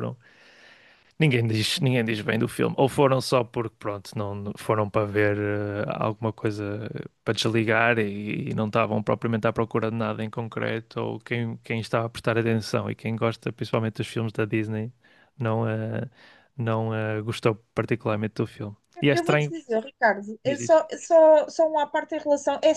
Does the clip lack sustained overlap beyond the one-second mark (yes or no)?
yes